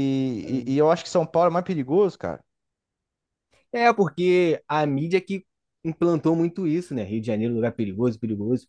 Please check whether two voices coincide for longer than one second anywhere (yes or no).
no